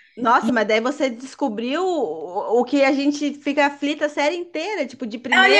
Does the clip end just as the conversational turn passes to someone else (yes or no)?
yes